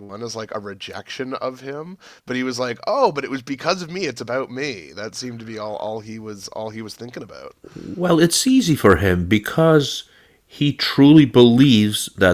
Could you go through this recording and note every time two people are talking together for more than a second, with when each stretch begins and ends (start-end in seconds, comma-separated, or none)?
none